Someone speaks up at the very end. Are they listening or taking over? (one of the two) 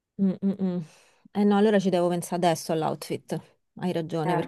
listening